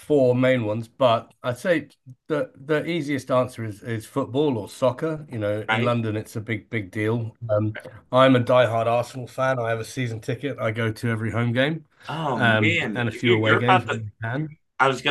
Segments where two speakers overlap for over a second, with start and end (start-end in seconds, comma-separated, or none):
12.3-14.0